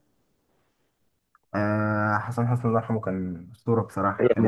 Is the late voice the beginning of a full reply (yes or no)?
yes